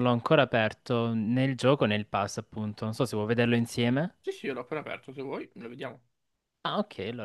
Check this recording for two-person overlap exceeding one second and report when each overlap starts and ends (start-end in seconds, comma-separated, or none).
none